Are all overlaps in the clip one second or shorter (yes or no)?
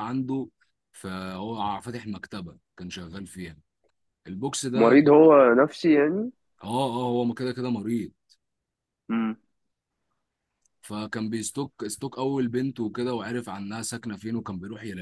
yes